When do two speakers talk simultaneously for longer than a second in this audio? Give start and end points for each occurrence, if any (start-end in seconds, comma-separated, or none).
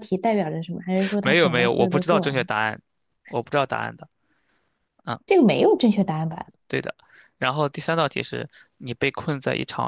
1.2-2.5